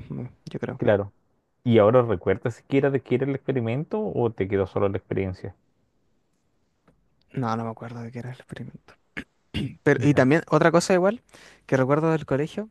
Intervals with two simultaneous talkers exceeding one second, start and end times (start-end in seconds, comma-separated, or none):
none